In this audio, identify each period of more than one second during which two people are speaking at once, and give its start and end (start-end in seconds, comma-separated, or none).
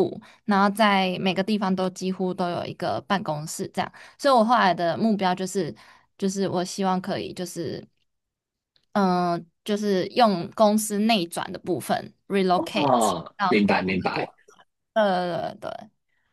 12.5-14.3